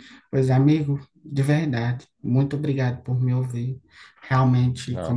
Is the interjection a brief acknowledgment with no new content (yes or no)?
yes